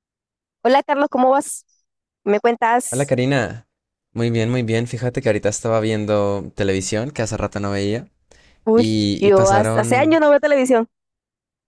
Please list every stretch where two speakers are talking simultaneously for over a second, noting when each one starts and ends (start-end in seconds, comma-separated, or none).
8.8-10.2